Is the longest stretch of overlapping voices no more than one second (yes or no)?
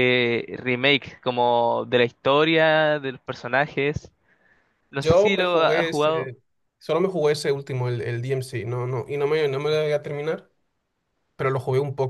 no